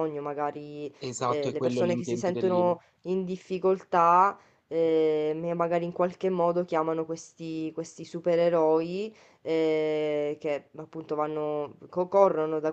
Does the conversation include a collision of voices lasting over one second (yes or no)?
yes